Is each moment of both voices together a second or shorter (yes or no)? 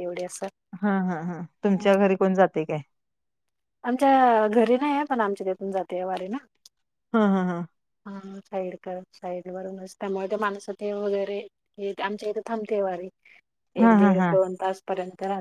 yes